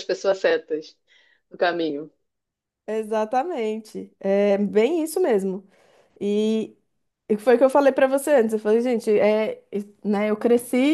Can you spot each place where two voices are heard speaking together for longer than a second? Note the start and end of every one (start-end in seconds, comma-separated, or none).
none